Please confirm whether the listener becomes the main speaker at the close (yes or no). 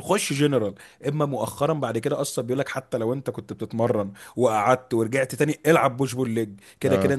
no